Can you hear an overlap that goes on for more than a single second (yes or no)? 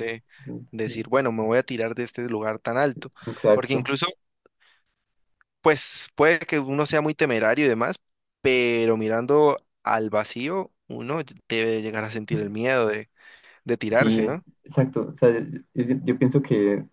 no